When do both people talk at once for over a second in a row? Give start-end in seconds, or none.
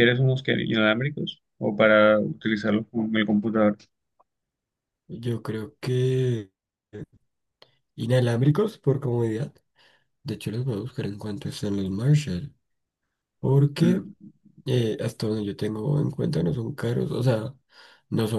none